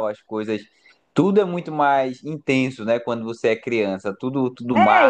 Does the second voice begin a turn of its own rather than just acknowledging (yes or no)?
yes